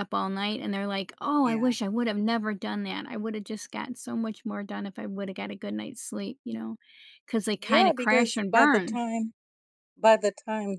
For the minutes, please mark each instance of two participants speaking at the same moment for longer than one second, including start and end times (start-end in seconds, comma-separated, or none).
7.6-9.0